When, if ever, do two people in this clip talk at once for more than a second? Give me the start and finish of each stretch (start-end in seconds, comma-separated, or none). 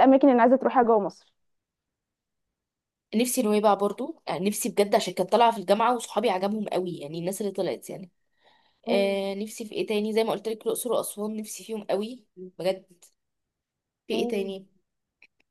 none